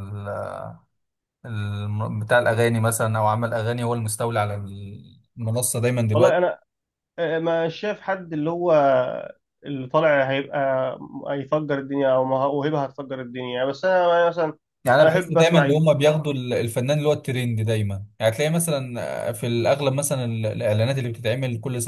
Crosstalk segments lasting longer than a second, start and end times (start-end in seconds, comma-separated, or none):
15.0-16.2